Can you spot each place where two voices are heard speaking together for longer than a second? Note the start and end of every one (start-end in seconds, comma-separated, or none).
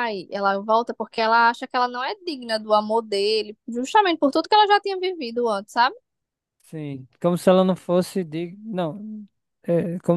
none